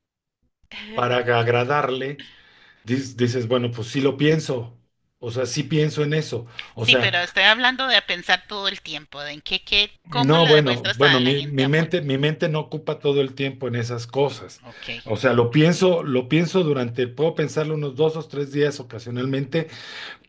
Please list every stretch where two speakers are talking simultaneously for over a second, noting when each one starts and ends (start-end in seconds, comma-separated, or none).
10.1-11.9